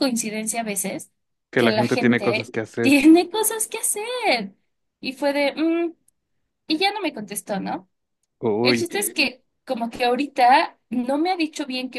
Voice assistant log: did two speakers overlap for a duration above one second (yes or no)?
yes